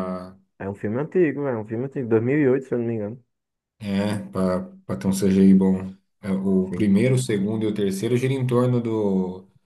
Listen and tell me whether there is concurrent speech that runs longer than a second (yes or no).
no